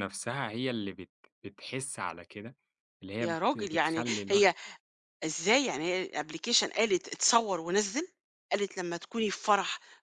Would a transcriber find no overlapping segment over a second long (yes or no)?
no